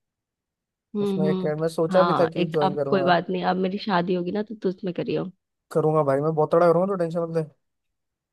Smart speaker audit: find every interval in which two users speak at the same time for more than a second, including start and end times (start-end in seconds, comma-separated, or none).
1.0-3.1